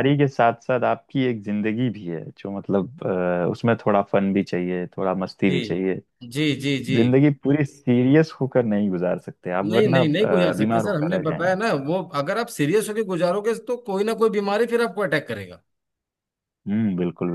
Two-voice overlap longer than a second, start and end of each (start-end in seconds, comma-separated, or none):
9.6-11.6